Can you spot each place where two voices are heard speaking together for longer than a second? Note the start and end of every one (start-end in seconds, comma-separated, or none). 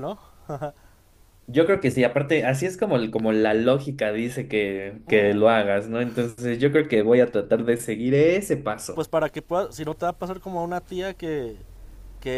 none